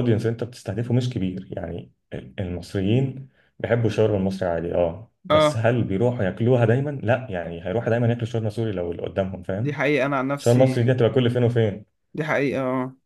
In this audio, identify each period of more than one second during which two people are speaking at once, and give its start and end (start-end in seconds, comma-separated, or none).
none